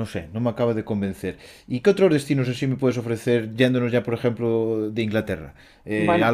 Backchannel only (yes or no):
yes